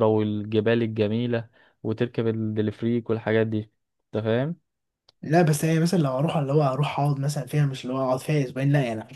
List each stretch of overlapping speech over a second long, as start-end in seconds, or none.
none